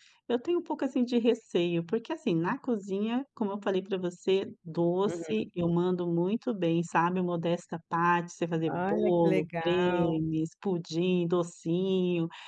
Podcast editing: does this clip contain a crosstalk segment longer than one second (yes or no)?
yes